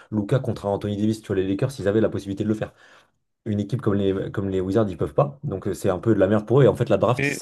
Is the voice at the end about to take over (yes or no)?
no